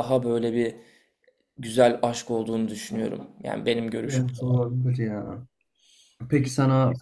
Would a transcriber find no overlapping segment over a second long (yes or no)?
yes